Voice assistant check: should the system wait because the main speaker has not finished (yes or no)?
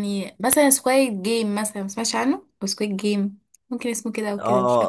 no